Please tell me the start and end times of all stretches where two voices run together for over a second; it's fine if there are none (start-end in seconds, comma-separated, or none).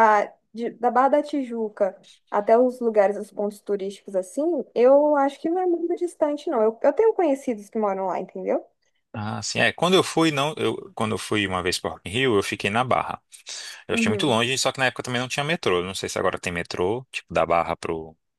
none